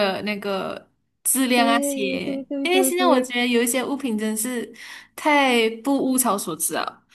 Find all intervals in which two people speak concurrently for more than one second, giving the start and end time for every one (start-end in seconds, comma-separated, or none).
1.5-3.3